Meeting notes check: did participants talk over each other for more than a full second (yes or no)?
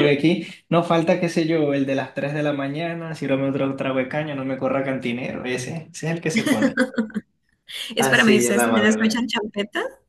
yes